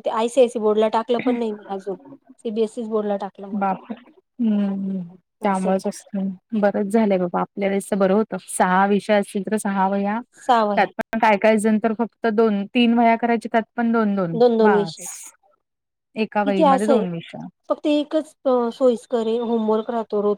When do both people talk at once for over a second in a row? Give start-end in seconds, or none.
none